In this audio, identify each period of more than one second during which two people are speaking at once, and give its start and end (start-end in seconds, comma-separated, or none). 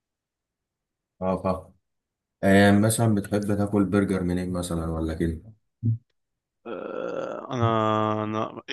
none